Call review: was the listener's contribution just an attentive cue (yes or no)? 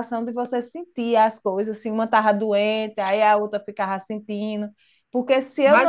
no